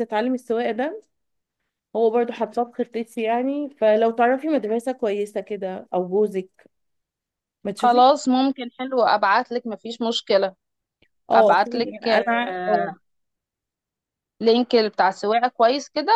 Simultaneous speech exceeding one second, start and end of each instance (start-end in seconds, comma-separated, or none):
11.3-12.9